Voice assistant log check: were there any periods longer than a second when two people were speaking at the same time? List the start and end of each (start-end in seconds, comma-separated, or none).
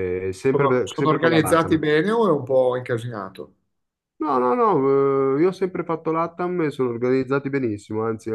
0.5-1.8